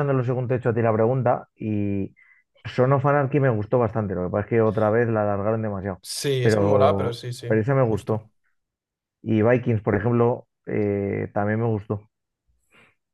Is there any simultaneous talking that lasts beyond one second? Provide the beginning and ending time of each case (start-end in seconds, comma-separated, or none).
6.4-8.3